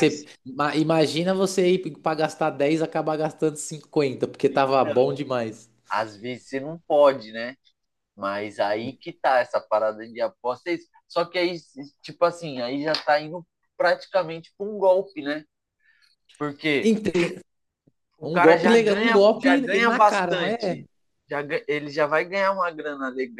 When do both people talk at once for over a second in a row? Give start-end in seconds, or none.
18.3-20.8